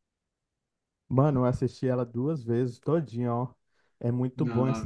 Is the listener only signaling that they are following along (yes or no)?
yes